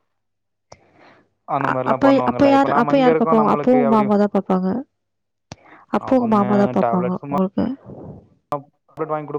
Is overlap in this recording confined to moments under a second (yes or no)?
no